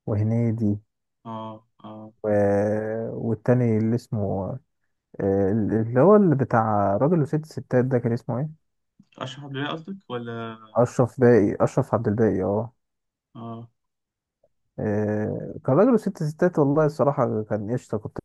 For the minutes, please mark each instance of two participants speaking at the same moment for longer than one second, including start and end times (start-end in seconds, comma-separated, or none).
none